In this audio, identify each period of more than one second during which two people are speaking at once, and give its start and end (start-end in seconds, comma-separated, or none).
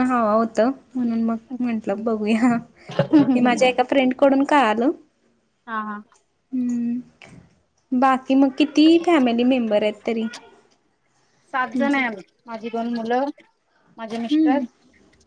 none